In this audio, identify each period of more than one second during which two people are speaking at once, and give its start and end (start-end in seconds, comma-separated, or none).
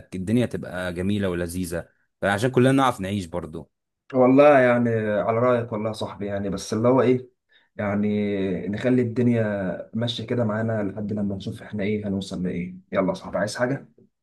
none